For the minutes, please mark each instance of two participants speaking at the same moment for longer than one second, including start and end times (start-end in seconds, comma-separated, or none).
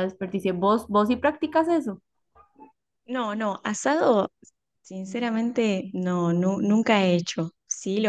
none